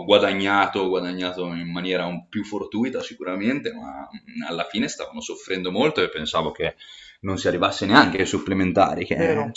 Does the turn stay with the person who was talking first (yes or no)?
yes